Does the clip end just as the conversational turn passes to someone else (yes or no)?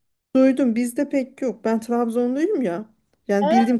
no